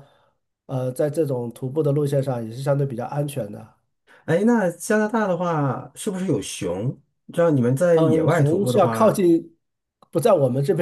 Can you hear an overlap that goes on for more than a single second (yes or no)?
yes